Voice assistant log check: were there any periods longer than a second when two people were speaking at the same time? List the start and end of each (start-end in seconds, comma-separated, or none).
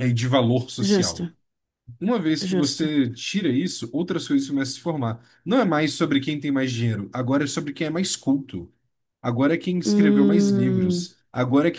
9.8-11.1